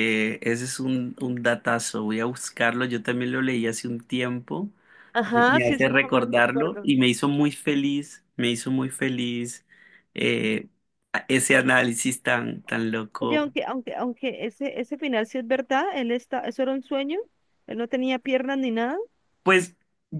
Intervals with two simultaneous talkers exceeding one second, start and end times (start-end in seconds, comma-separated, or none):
5.3-6.9